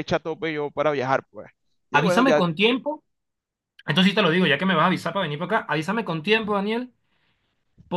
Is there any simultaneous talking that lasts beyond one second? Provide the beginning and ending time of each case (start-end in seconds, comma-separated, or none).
none